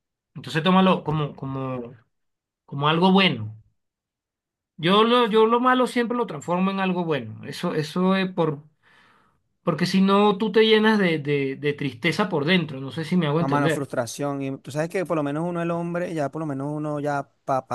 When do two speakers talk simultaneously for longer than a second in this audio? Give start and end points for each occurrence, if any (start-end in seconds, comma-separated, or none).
none